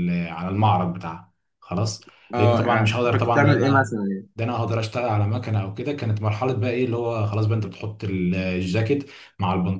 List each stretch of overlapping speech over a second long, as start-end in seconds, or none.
2.3-4.0